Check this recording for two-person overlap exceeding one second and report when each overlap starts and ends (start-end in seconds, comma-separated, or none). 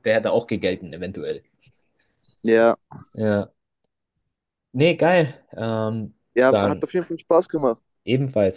none